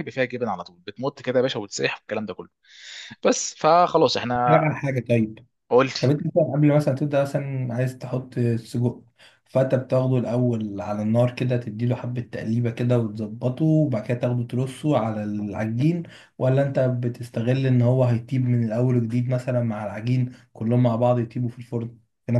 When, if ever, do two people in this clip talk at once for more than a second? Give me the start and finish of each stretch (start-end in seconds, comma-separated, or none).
none